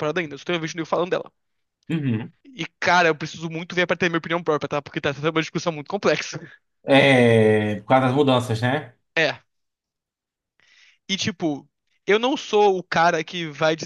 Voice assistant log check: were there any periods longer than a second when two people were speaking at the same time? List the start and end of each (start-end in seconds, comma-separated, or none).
none